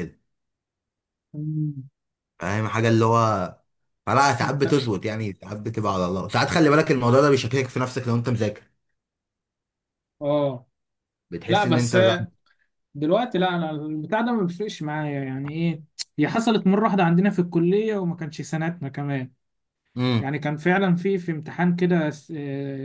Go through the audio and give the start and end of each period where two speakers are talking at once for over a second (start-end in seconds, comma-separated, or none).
none